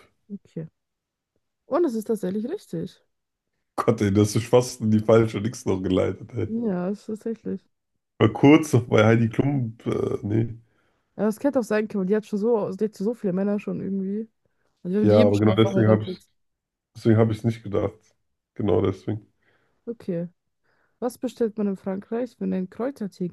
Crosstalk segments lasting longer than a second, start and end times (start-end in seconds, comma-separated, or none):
15.0-16.2